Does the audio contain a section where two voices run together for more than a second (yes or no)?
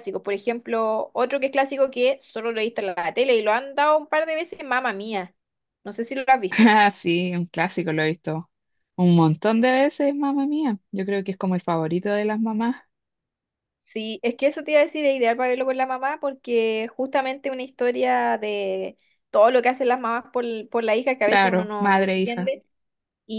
yes